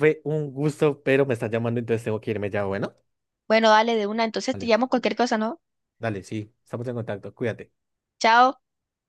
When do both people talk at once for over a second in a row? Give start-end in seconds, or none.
none